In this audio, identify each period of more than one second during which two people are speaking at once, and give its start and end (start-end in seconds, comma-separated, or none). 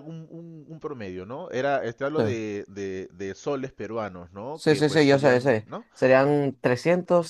4.5-5.9